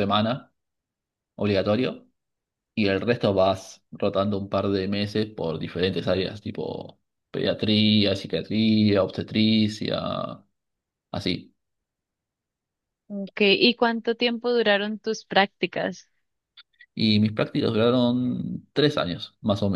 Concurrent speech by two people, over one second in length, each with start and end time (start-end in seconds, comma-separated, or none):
none